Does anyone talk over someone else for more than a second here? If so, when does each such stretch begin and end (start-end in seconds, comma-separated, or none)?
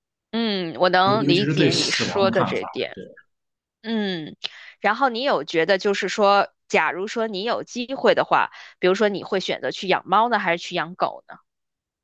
1.0-3.0